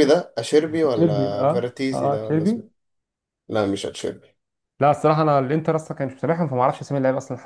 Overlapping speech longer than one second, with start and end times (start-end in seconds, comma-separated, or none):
0.8-2.6